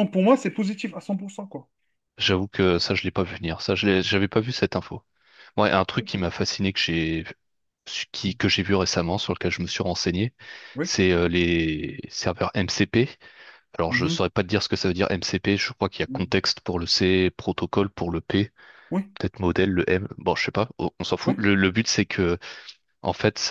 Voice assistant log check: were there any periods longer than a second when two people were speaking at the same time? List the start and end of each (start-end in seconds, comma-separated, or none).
none